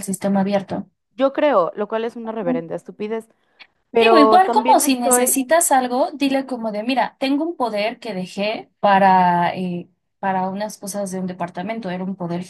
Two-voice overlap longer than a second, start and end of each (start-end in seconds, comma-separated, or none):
4.0-5.4